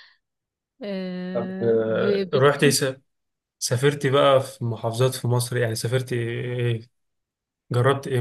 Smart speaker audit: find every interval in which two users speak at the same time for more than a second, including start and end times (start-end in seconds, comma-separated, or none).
1.3-2.6